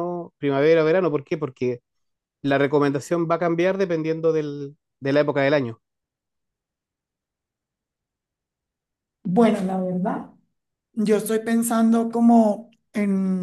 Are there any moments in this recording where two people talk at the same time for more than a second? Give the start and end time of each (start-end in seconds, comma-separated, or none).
none